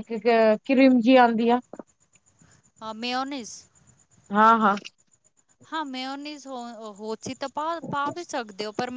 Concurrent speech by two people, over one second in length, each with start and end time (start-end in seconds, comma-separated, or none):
none